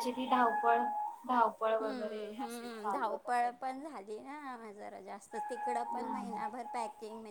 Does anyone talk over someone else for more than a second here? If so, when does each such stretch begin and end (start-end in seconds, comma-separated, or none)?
1.8-3.7